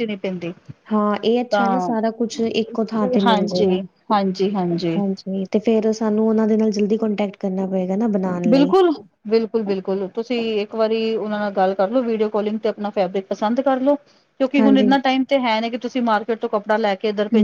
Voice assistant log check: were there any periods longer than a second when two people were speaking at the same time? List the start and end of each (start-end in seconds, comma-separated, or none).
none